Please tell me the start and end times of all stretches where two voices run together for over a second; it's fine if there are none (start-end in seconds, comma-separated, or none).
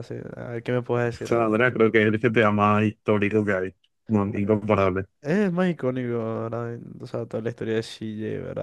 none